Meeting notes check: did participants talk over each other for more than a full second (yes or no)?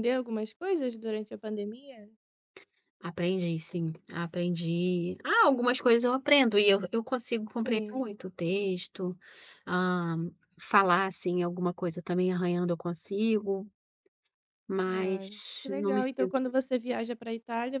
yes